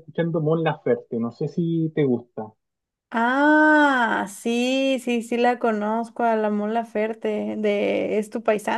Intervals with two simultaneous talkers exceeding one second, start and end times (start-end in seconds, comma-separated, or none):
none